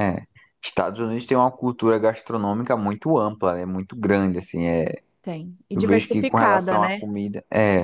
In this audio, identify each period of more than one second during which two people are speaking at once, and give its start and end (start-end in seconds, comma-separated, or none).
5.7-7.1